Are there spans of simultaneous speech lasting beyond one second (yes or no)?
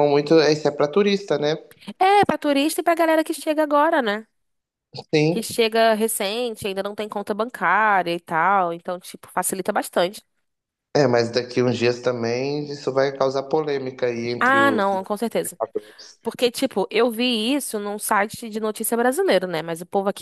no